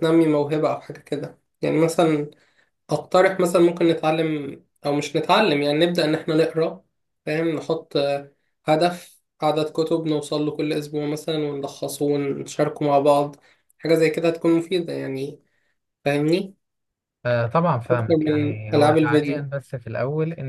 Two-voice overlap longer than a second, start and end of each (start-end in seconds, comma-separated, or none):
17.9-19.5